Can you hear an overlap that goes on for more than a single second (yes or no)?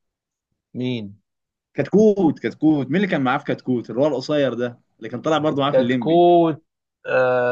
no